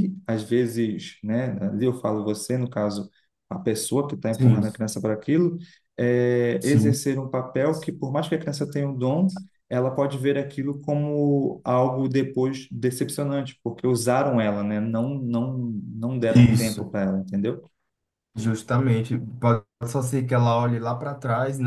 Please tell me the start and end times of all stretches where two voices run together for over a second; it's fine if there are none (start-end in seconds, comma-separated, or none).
none